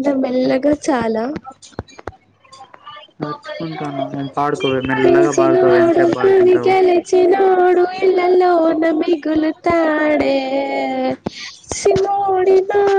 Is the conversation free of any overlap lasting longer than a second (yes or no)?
no